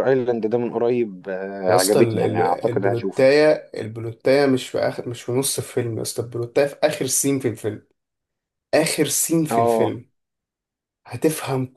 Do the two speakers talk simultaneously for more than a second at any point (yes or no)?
yes